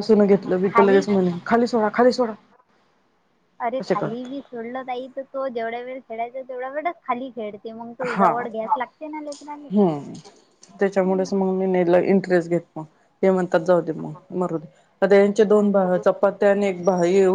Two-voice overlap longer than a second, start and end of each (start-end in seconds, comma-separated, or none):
none